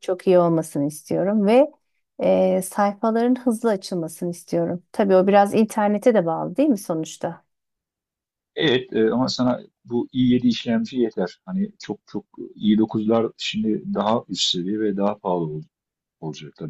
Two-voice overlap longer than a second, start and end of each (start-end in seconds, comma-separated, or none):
none